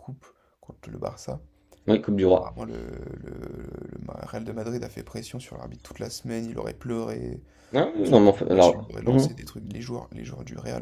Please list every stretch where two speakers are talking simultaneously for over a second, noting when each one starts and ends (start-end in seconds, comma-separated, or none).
8.0-9.2